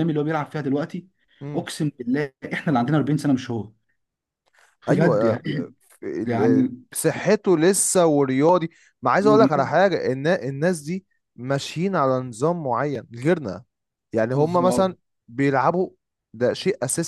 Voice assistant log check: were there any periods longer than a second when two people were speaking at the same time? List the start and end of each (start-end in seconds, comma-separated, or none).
none